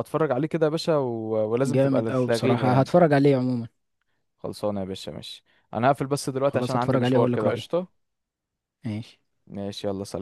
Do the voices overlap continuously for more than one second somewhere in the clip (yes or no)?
yes